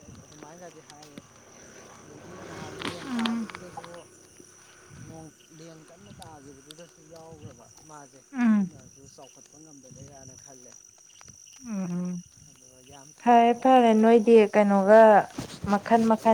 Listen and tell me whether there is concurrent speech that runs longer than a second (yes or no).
yes